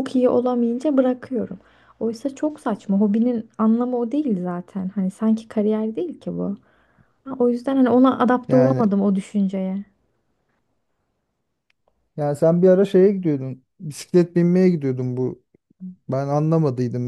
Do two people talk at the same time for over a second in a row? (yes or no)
no